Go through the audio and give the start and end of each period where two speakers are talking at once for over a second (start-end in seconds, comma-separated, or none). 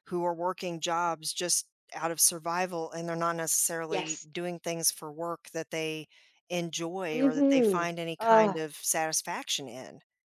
7.1-8.6